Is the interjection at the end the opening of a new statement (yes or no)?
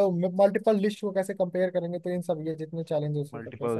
yes